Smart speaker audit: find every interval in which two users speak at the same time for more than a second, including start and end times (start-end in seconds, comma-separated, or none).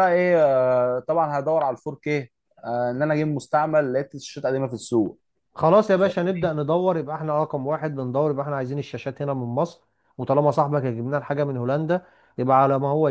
none